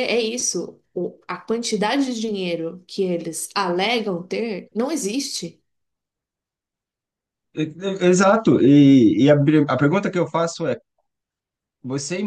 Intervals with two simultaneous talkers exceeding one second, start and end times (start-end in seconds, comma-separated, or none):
none